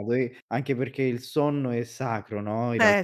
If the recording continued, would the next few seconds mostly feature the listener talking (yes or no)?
no